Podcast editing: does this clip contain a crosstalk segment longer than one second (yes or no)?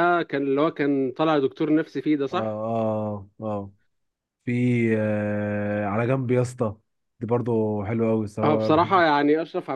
no